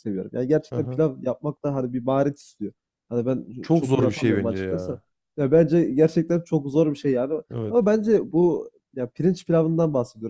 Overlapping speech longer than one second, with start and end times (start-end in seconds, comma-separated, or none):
3.6-5.0